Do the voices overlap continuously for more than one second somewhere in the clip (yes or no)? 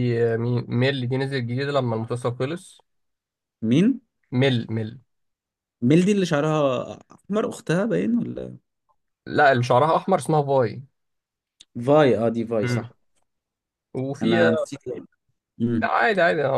no